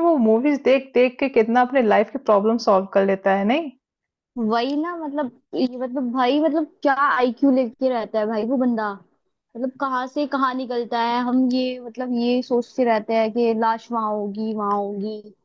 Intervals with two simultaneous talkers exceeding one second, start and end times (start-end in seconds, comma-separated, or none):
none